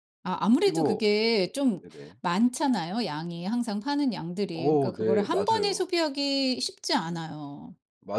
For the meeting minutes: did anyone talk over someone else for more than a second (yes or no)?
yes